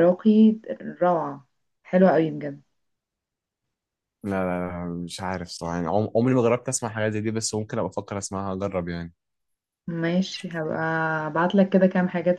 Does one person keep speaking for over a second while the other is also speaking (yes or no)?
no